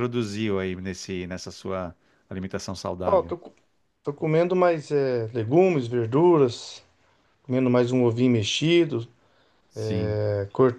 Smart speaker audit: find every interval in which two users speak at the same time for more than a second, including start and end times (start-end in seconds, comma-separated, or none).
none